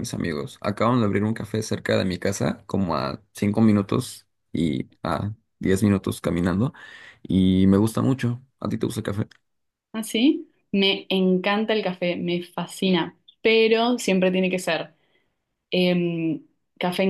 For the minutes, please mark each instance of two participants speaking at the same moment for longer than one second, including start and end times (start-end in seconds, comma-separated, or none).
none